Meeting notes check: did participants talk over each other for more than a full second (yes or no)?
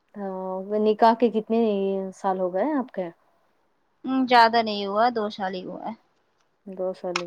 no